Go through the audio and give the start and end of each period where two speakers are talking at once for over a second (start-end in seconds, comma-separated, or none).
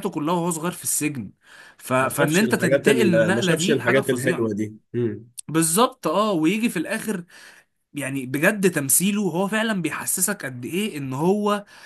2.0-4.5